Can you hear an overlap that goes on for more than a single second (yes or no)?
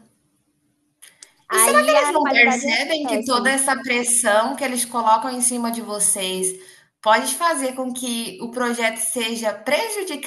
yes